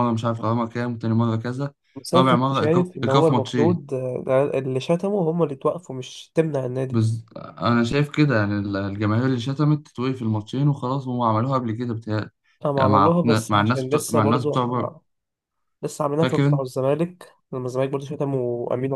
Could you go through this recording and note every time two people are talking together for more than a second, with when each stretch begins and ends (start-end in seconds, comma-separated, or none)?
2.1-3.8, 12.8-14.6